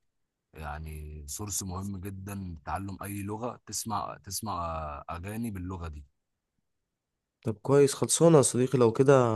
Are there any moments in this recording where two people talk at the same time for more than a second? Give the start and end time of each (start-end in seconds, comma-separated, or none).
none